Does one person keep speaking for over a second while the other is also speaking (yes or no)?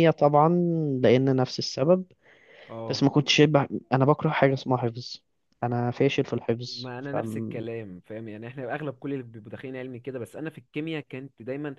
no